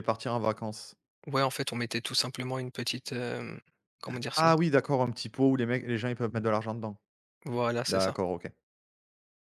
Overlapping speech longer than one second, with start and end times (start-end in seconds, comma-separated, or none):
none